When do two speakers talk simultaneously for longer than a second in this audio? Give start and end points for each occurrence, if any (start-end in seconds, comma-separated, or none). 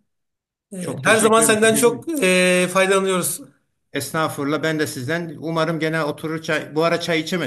0.8-2.1